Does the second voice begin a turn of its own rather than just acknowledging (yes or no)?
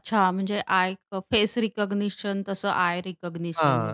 yes